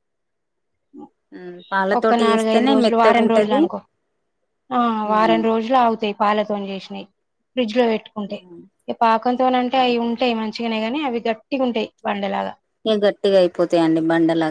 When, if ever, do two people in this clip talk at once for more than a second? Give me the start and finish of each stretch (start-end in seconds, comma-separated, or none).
2.0-3.6